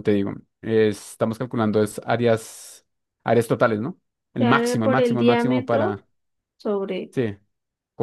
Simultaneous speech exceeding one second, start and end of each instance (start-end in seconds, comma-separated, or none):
4.4-6.0